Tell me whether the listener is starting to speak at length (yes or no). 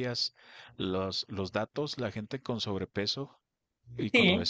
no